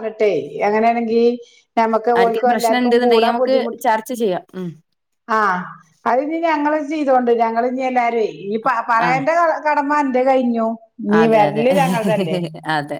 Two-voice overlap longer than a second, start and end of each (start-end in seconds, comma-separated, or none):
2.2-3.8